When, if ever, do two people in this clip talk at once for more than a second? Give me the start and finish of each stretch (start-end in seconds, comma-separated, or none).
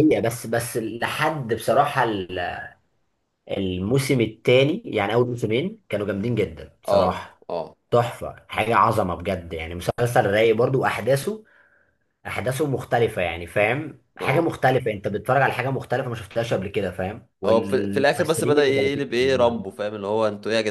17.4-19.6